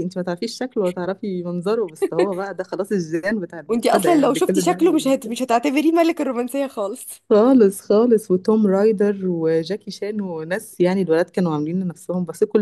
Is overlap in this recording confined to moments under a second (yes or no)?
no